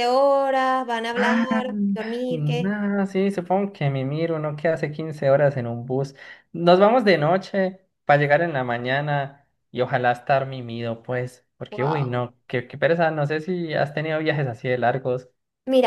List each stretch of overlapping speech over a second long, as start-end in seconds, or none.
none